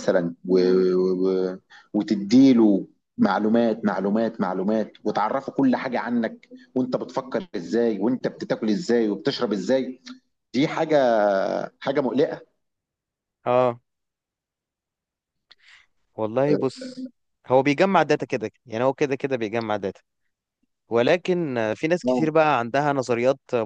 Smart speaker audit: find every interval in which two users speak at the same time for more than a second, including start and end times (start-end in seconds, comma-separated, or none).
none